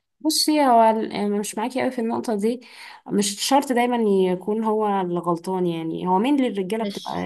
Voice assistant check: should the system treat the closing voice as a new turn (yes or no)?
no